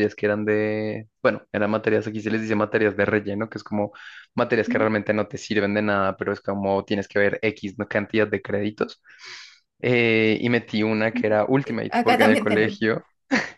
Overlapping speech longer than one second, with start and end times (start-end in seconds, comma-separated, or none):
11.1-12.8